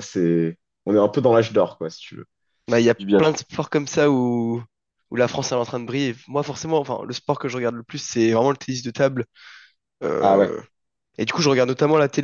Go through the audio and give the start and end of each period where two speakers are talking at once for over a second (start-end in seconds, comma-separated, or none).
none